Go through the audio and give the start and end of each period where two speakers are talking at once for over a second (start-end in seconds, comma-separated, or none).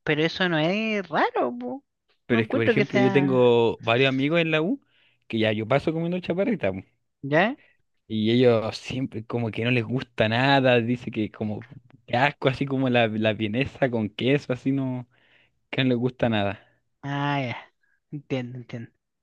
2.3-3.6